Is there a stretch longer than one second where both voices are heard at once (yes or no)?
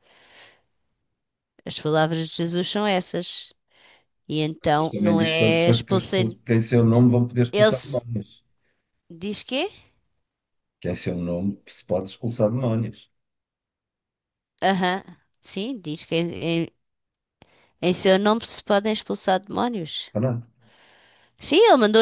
yes